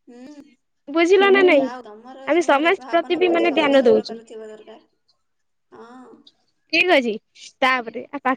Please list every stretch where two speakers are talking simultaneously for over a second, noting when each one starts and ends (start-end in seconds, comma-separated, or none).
2.3-4.2